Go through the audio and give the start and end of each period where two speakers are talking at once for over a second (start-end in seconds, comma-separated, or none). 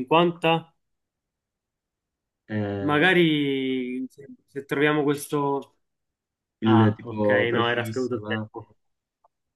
6.7-8.5